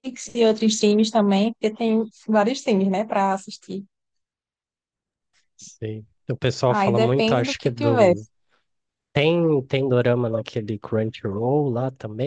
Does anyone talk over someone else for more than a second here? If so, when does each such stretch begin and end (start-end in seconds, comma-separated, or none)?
6.7-8.1